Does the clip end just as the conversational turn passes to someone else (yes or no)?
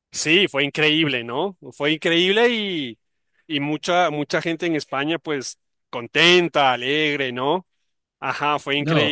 yes